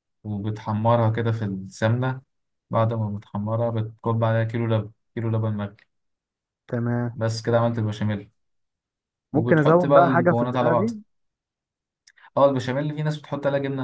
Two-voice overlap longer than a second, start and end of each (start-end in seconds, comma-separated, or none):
9.3-10.9